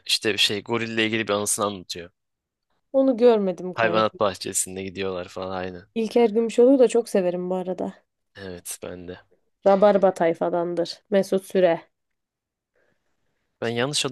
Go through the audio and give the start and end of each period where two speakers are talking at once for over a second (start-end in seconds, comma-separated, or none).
none